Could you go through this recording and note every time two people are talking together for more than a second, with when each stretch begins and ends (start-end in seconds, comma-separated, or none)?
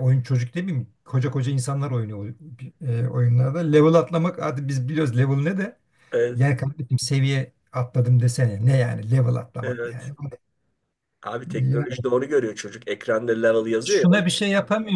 none